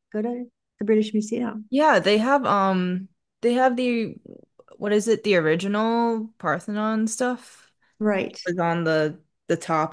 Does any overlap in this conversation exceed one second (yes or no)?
no